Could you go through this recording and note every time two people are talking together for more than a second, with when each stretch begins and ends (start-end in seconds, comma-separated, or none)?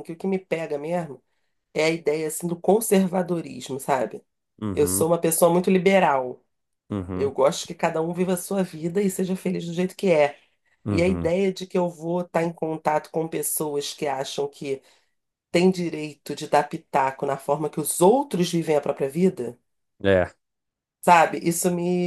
none